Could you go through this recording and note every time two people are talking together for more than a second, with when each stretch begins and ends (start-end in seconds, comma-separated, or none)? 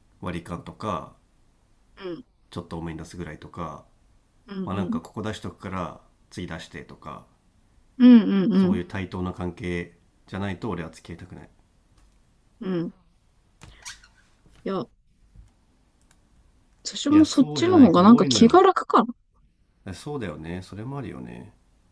17.1-18.6